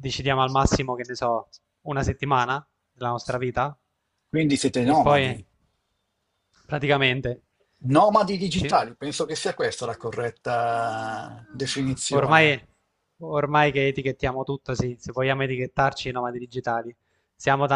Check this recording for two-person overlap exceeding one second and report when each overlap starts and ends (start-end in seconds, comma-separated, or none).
none